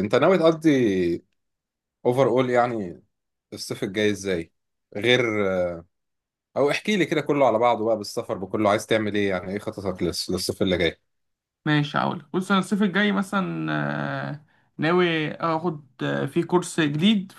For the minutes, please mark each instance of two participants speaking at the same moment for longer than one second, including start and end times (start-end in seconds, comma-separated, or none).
none